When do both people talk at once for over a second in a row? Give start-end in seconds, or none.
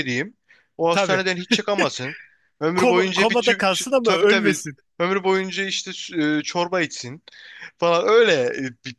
2.8-4.6